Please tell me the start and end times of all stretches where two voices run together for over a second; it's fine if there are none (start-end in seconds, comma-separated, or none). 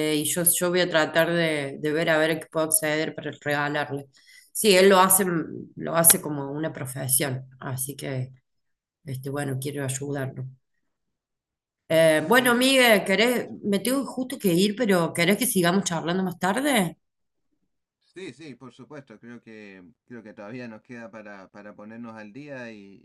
12.1-13.6